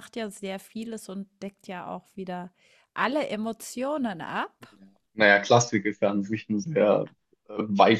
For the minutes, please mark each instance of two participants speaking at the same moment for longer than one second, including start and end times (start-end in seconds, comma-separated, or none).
none